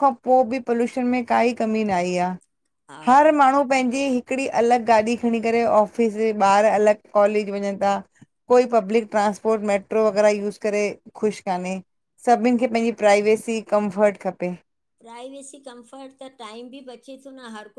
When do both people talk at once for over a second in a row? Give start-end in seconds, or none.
none